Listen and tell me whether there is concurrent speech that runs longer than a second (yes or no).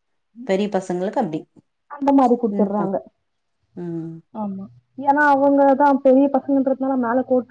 no